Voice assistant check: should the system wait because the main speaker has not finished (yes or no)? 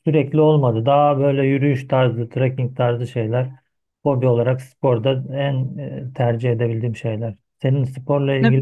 no